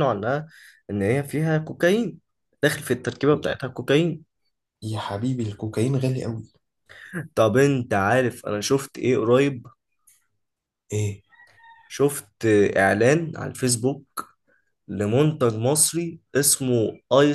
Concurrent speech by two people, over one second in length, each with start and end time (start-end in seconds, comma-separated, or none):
none